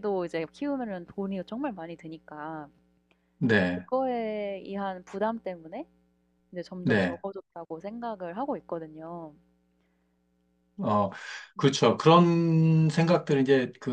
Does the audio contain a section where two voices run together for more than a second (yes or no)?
no